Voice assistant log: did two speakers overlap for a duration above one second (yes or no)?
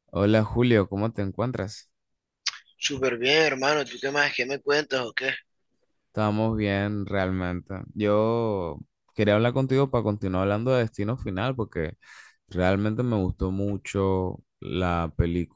no